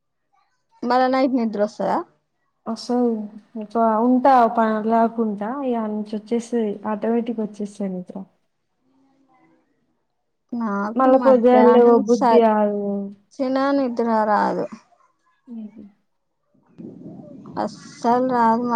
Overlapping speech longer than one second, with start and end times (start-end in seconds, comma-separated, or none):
11.0-13.3